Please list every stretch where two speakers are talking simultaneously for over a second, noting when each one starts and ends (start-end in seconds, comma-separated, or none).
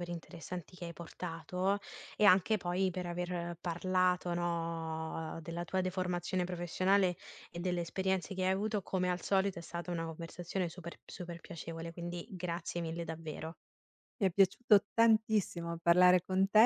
none